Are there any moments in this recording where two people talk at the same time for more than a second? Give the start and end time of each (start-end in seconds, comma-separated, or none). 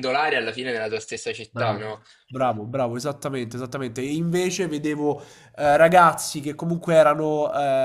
none